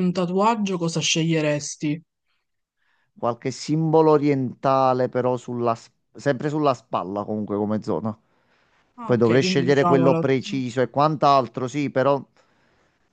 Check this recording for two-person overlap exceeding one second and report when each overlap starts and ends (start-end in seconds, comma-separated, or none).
9.0-10.2